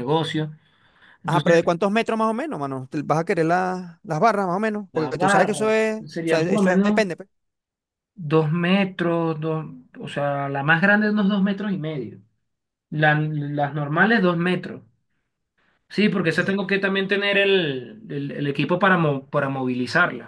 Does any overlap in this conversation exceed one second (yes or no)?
yes